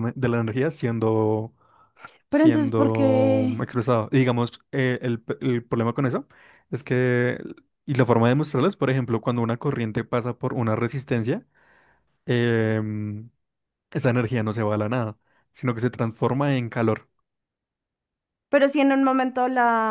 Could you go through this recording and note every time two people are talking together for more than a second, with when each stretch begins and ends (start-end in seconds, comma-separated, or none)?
2.3-3.6